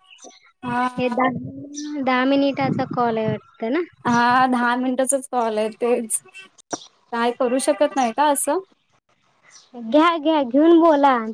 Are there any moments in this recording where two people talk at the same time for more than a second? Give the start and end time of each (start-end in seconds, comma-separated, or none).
none